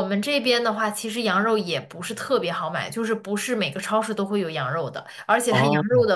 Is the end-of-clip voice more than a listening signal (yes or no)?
no